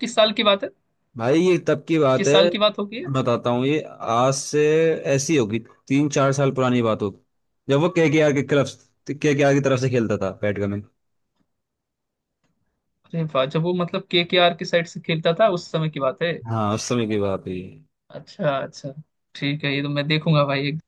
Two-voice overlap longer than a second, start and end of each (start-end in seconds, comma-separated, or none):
none